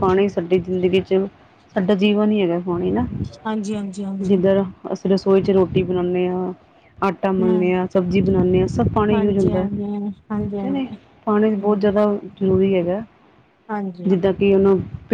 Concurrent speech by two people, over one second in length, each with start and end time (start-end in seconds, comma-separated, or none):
none